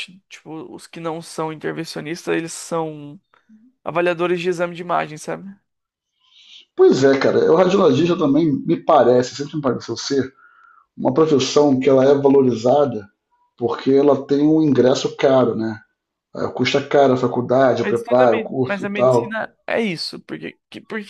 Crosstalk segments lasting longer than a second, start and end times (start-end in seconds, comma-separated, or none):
17.8-19.4